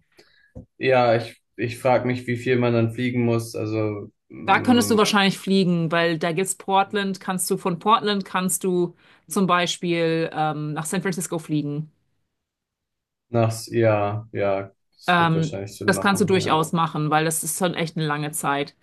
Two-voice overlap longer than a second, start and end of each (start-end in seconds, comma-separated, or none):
15.1-16.6